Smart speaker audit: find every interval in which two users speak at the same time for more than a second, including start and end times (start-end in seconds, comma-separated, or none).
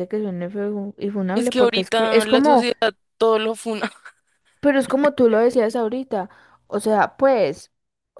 1.4-2.6